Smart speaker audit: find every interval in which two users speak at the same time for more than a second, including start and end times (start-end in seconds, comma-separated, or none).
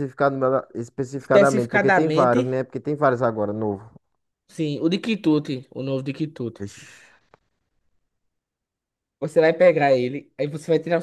1.1-2.5